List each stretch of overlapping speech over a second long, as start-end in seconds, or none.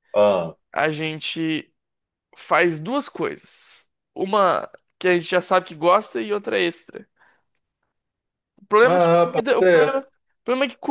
8.8-10.1